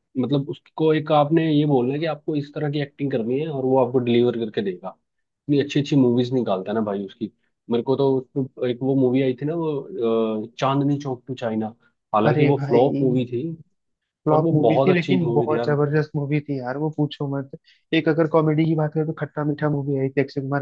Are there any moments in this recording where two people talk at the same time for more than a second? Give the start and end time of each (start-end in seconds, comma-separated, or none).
14.3-15.8